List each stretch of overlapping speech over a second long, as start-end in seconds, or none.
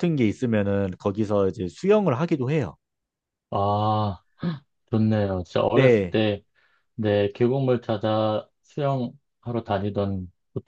none